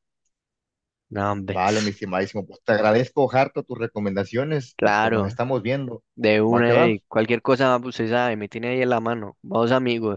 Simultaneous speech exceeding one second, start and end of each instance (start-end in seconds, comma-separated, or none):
none